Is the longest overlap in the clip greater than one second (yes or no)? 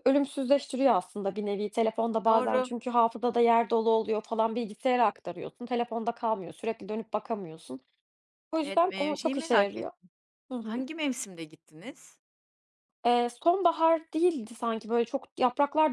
yes